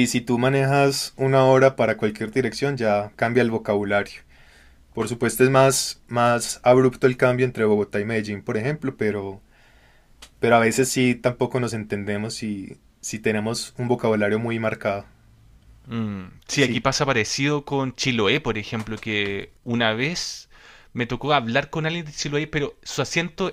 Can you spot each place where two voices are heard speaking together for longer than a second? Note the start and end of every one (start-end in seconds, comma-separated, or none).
none